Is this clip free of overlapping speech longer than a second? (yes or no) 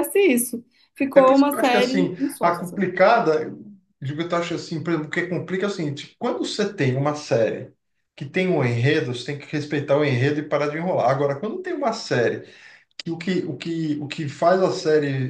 no